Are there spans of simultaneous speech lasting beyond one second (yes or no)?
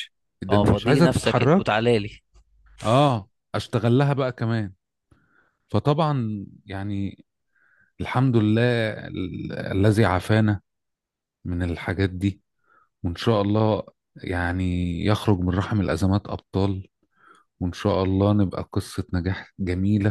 yes